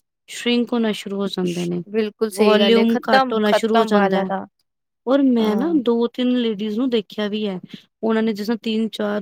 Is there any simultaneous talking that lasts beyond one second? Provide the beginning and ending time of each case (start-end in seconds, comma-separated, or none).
2.4-4.3